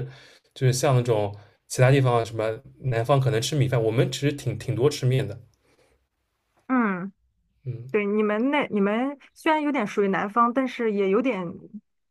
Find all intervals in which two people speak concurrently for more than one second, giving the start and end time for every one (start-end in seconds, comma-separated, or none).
none